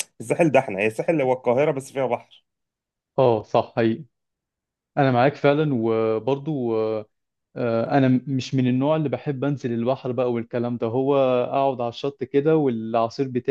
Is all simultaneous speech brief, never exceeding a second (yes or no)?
yes